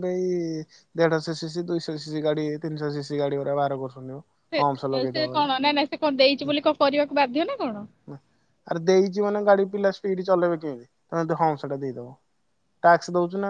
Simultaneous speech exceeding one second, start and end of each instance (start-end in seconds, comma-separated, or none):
none